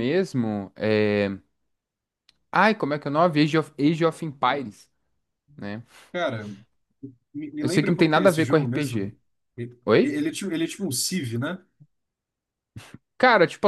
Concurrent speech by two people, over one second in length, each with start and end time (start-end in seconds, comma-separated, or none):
7.6-9.1